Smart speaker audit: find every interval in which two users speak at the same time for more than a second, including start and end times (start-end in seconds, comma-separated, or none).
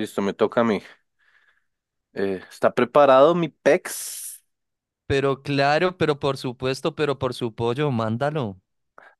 none